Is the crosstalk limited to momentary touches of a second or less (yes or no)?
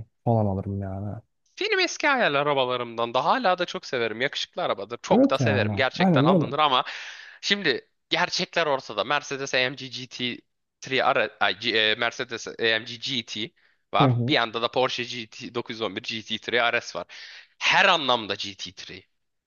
no